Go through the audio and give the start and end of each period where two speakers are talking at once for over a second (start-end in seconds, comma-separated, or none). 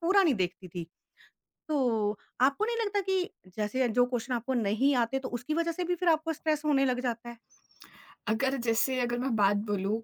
none